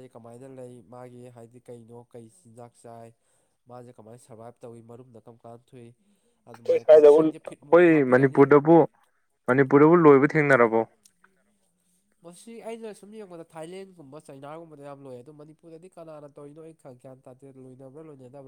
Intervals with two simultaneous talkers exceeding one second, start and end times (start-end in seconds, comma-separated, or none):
6.7-8.4